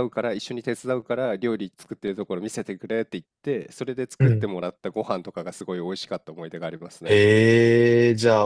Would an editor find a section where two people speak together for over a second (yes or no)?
no